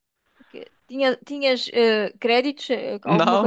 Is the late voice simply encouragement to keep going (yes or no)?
no